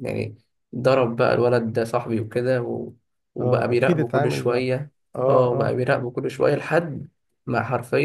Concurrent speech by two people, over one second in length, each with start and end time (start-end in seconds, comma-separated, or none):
3.4-4.7